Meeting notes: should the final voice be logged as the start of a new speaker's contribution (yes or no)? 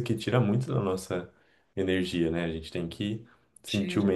no